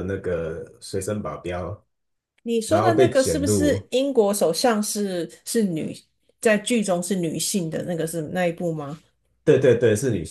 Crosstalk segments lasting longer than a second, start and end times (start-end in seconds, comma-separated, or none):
2.7-3.9